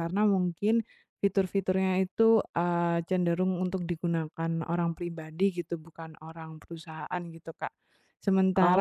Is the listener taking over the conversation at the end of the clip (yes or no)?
no